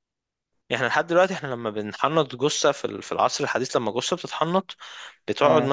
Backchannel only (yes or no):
yes